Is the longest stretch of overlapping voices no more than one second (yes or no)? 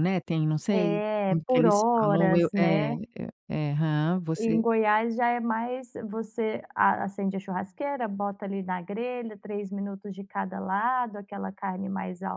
no